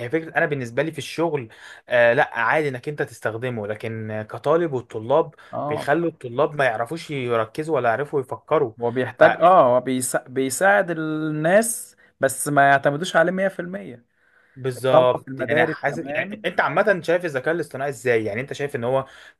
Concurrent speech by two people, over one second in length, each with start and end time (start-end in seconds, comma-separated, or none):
14.8-16.4